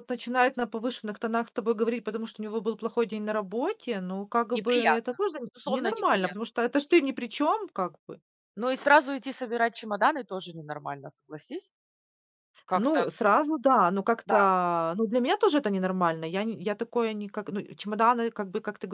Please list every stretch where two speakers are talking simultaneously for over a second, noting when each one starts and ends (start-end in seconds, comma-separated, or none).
4.5-6.4